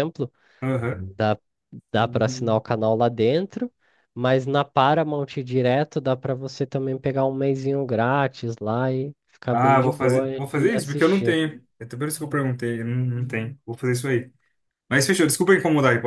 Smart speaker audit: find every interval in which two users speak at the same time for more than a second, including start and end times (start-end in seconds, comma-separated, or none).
9.5-11.4